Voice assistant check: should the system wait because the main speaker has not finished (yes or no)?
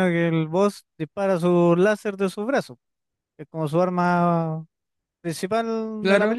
no